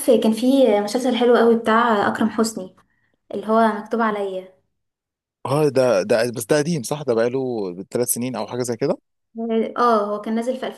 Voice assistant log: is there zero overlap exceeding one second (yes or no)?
yes